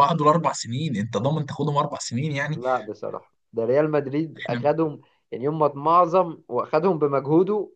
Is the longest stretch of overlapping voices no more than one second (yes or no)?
yes